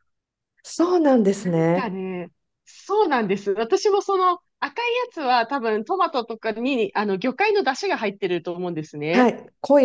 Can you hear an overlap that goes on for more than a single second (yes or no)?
no